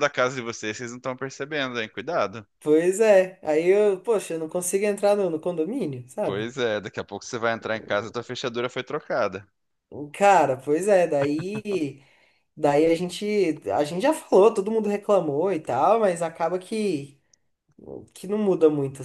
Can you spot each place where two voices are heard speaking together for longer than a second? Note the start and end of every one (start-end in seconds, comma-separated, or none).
none